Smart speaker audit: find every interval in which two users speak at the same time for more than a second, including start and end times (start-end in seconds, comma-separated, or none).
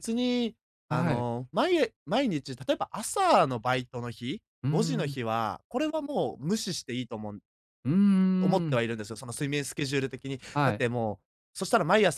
none